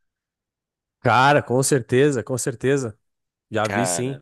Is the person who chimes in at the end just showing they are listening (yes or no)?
yes